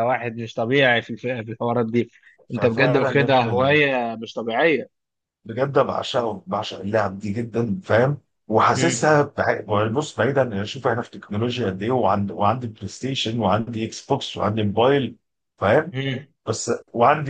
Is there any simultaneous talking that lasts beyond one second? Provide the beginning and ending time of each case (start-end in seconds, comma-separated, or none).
2.5-3.8